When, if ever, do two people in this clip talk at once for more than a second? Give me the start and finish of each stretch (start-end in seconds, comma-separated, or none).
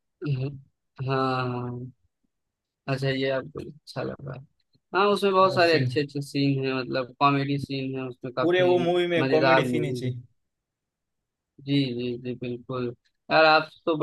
8.4-10.1